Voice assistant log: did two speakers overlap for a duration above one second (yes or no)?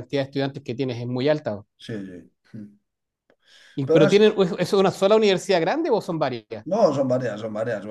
no